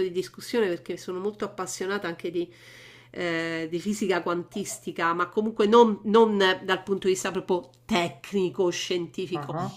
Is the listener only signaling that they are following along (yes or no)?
yes